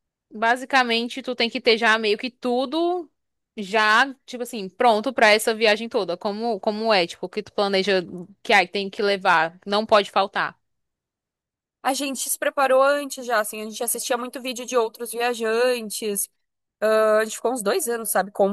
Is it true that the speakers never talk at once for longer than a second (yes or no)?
yes